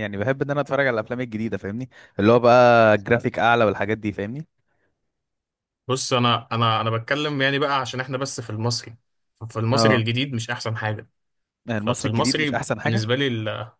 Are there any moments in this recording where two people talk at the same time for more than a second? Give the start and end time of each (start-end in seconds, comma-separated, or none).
11.8-13.1